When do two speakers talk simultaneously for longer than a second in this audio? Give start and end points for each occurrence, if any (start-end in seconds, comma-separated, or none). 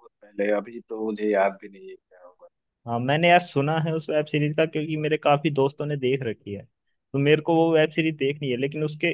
none